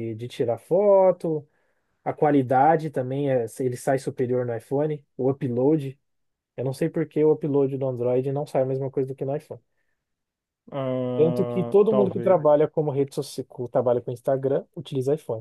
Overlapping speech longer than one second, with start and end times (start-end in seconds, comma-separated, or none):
11.2-12.4